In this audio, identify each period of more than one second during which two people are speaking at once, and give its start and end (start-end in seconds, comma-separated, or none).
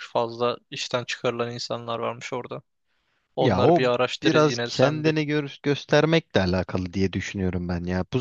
3.4-5.2